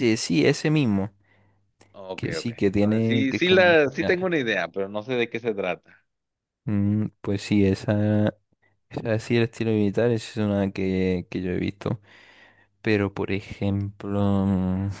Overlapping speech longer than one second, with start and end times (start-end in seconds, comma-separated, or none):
2.1-3.7